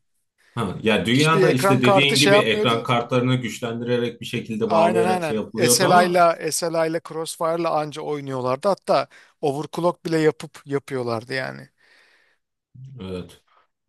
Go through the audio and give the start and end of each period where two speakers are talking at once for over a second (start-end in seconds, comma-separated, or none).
1.1-2.9, 4.7-6.2